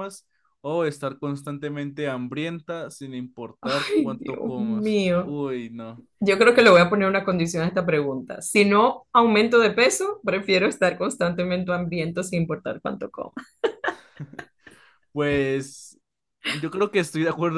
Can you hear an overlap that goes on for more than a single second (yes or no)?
yes